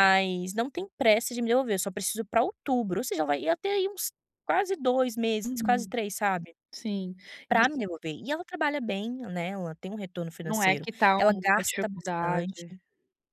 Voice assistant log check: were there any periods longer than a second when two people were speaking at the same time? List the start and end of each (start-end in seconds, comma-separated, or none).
10.4-12.6